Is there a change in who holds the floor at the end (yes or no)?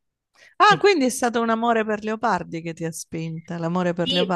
yes